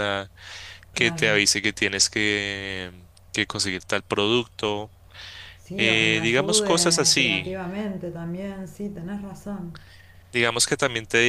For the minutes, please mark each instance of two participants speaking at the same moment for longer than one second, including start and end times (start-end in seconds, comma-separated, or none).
5.8-7.5